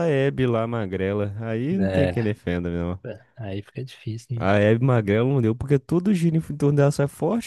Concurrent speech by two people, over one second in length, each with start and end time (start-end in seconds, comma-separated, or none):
none